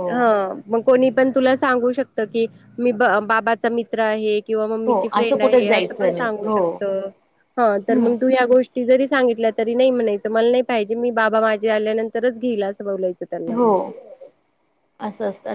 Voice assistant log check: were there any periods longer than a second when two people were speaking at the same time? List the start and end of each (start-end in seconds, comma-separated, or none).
4.9-6.6